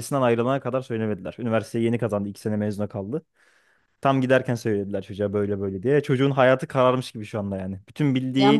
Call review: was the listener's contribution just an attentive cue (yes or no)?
no